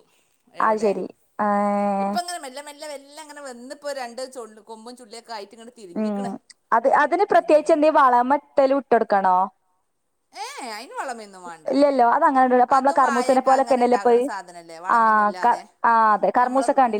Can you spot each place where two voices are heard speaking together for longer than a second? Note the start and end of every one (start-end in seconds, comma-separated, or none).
12.8-14.2